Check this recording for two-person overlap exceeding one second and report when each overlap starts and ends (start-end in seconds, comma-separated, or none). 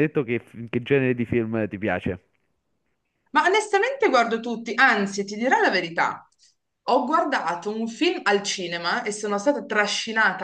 none